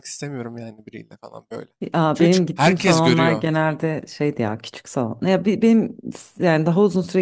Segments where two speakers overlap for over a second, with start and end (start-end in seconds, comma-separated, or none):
2.1-3.5